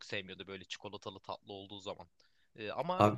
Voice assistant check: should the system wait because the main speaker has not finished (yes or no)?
yes